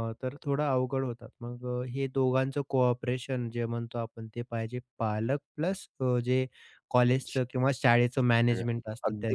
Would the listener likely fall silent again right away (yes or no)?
no